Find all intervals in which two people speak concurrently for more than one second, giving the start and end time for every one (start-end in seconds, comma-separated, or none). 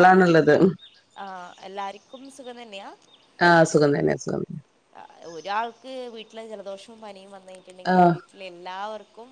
none